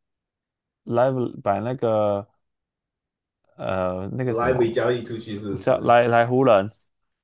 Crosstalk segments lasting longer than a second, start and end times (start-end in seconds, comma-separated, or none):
4.3-6.0